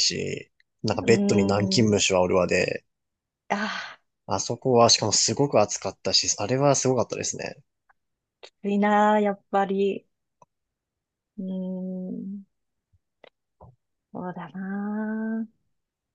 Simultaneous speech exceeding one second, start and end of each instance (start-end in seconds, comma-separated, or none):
none